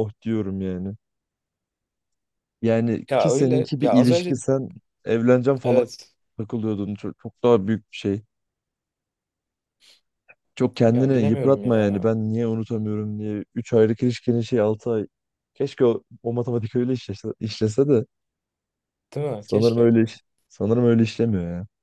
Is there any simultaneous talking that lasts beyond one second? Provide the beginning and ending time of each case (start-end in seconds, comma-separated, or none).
3.1-4.4, 10.9-12.1